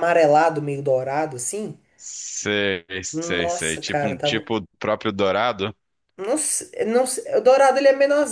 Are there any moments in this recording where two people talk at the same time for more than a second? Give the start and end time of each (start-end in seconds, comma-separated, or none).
3.1-4.5